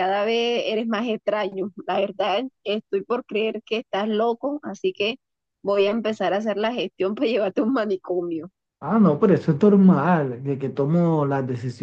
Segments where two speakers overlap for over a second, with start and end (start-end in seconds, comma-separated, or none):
none